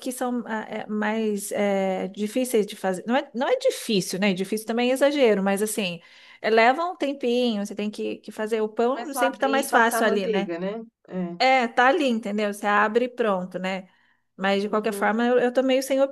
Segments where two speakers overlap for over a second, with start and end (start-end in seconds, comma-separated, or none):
8.8-10.5